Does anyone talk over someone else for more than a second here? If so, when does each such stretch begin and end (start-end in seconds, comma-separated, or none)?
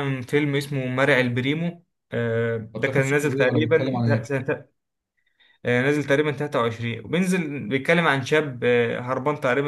2.7-4.3